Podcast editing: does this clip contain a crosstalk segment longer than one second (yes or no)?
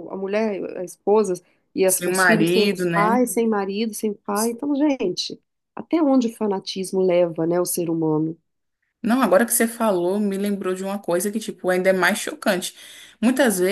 yes